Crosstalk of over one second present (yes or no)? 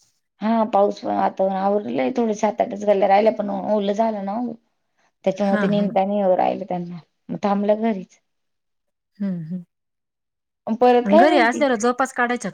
no